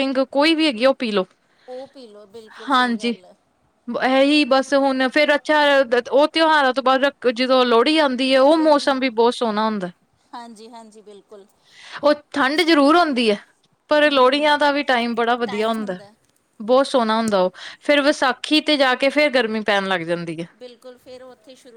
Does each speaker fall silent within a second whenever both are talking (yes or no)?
yes